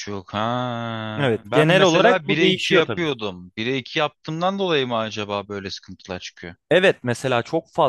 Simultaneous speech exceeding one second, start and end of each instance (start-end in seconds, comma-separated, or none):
1.2-3.0